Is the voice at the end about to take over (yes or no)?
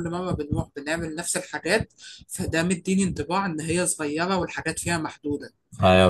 yes